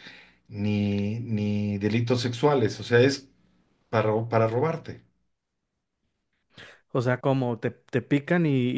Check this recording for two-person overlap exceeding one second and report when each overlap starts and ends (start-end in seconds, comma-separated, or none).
none